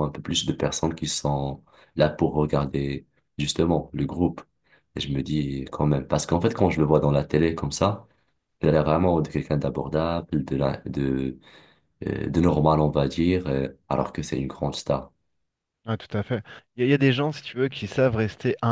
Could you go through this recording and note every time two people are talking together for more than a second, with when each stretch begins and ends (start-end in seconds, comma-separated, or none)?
none